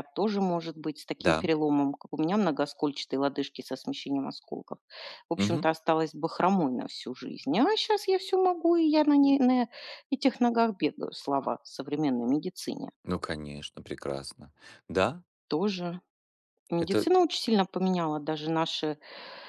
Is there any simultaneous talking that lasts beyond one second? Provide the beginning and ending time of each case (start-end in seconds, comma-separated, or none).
none